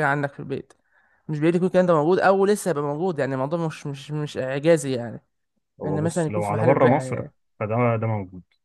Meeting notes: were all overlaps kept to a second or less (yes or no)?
no